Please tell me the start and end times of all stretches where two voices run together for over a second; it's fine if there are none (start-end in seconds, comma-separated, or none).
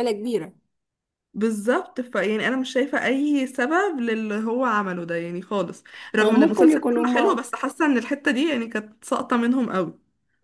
6.2-7.4